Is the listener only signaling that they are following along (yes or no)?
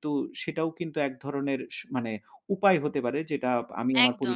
no